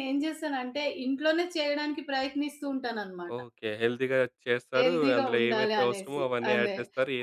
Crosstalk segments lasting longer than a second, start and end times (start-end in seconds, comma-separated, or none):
4.8-6.7